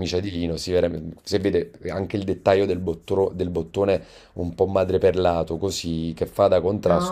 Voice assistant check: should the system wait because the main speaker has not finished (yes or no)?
no